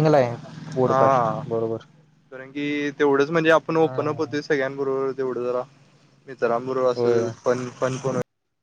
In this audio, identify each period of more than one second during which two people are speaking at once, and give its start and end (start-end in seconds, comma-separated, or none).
none